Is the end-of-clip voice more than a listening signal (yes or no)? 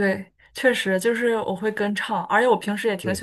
no